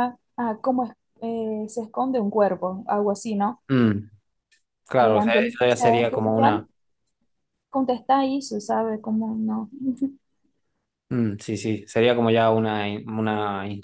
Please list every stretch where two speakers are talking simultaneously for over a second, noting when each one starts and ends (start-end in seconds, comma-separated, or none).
5.0-6.7